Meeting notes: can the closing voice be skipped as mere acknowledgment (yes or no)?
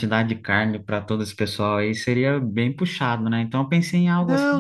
no